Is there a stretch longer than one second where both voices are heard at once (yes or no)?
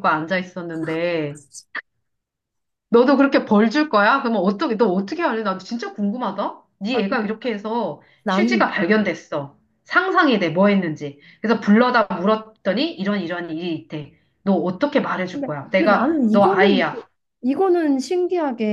yes